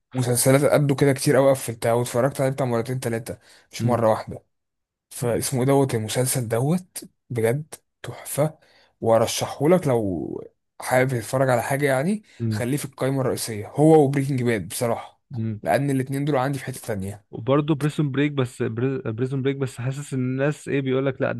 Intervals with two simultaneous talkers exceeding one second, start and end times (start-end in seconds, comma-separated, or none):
none